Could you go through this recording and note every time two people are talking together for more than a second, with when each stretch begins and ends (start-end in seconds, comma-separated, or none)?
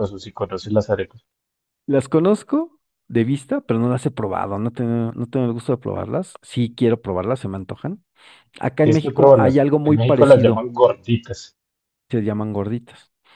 8.8-10.7